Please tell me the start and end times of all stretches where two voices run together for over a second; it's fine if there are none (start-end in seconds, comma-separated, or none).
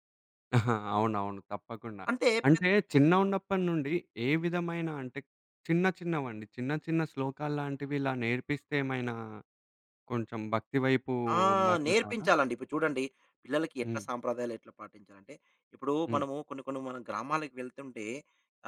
none